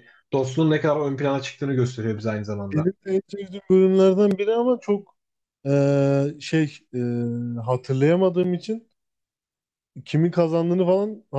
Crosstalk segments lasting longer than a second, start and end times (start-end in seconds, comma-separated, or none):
none